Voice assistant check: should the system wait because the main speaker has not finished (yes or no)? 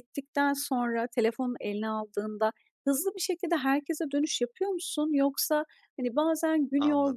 yes